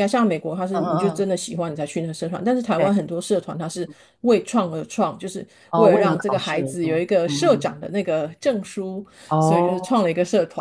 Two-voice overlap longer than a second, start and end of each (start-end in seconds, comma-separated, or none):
5.7-7.7